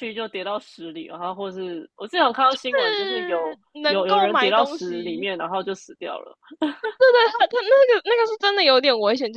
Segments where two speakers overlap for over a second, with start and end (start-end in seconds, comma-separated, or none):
2.6-5.3